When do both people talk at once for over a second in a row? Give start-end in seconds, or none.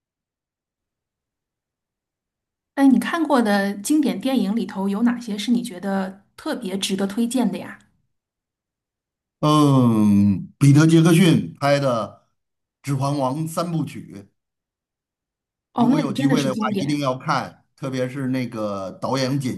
15.8-17.0